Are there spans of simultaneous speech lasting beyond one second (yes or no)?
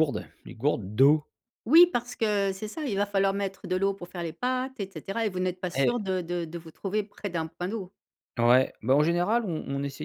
no